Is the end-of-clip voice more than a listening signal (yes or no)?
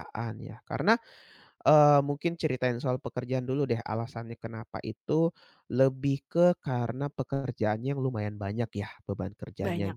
no